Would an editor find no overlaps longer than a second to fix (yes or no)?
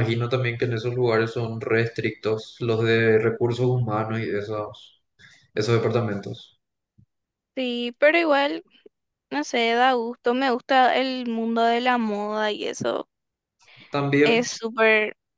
yes